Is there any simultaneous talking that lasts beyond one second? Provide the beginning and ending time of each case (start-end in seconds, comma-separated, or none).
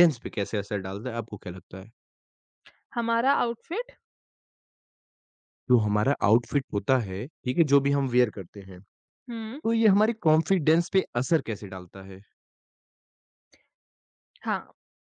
none